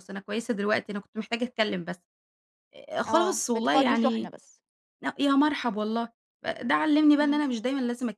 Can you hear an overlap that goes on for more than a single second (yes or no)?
yes